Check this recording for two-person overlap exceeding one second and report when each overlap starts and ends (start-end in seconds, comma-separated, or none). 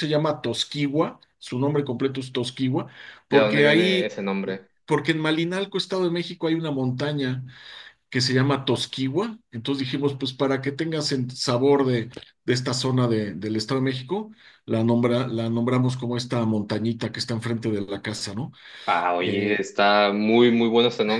3.3-4.7